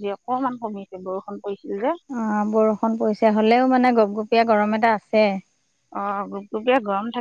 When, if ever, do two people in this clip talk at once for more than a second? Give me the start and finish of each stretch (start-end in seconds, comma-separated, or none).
none